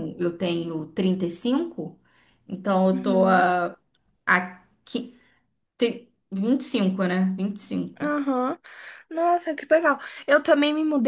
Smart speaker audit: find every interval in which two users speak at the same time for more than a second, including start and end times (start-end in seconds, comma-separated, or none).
none